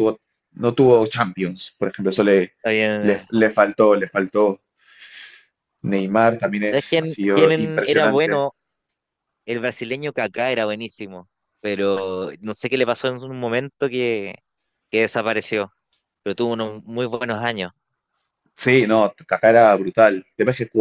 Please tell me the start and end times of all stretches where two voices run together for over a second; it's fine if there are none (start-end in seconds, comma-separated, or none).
6.6-8.5